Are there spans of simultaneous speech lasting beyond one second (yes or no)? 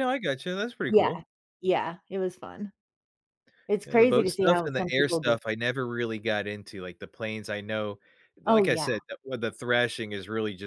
yes